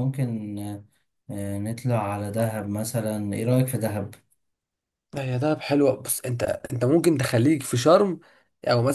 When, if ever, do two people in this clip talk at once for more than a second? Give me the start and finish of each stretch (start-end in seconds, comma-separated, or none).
none